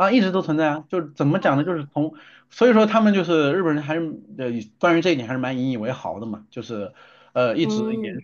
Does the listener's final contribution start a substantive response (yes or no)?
no